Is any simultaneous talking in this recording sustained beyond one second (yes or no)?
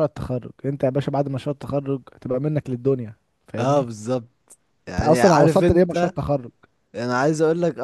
yes